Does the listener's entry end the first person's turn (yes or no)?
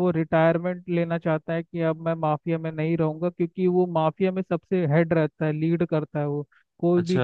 no